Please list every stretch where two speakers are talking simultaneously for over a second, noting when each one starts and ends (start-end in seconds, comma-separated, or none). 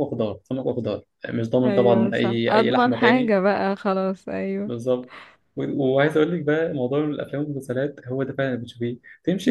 1.6-3.4